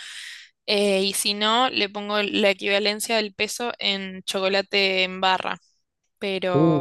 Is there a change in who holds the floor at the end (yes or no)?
no